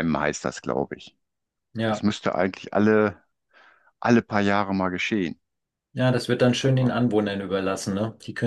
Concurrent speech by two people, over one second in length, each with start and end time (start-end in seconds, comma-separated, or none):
none